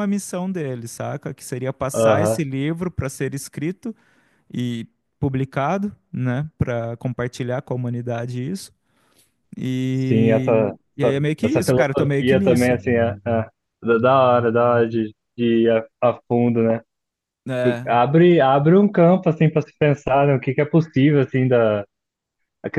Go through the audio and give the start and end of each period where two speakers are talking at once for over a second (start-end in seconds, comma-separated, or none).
9.9-12.8